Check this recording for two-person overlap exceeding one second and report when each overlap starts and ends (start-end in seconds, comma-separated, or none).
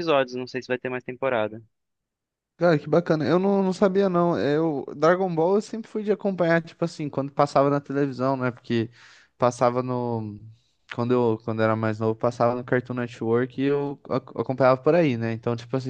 none